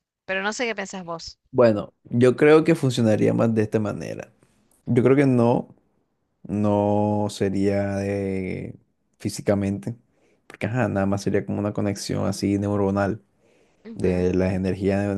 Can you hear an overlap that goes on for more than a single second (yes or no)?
no